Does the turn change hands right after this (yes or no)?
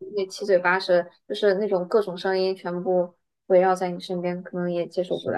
yes